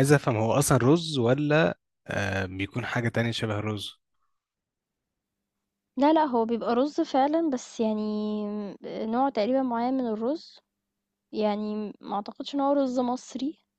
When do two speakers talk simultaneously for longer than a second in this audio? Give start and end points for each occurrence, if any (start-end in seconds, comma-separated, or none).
none